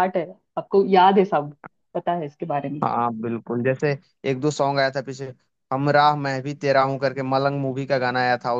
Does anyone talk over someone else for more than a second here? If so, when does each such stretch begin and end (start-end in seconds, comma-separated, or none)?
none